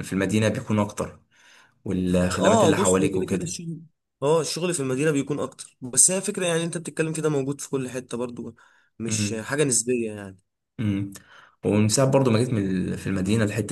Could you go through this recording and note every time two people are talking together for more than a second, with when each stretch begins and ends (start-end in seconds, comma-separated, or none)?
2.3-3.6